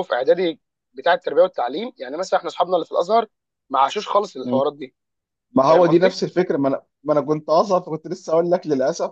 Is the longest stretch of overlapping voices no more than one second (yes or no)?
yes